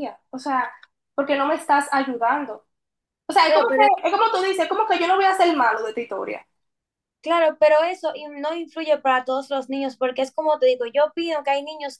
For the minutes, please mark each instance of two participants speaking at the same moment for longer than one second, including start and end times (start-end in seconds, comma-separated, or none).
none